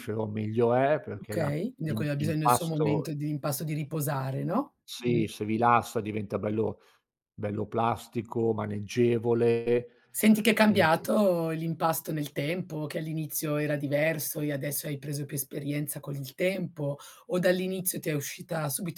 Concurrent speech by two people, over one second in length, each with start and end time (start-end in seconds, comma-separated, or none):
1.1-3.1